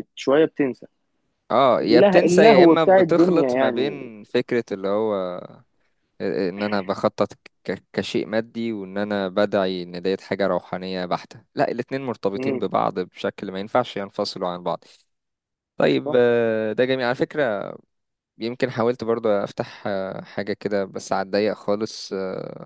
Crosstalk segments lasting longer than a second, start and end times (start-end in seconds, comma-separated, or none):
1.8-4.1